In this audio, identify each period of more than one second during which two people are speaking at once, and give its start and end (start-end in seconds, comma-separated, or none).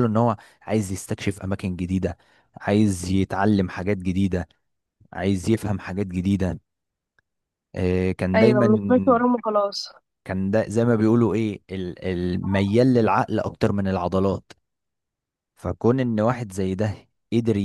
none